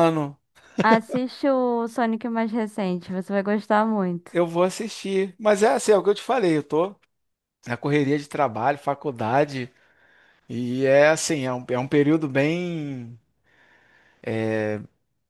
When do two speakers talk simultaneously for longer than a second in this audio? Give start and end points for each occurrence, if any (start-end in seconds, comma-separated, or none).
none